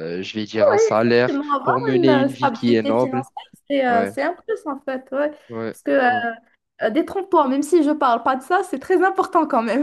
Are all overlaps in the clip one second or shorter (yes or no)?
no